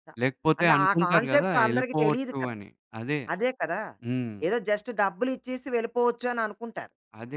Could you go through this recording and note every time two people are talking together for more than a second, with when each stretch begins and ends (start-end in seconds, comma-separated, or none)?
0.6-2.5